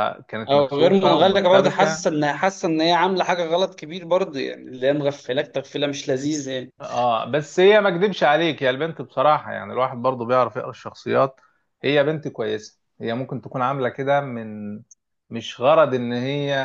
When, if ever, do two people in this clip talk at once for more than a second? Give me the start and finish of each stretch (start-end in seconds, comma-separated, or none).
0.5-2.0